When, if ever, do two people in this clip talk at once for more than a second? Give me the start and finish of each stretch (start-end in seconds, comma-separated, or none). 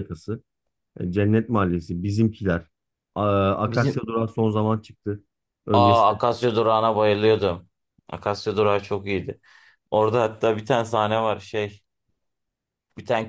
none